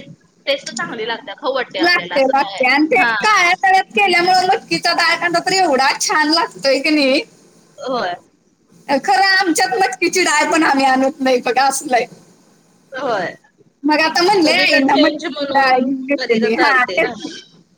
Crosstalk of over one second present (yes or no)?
yes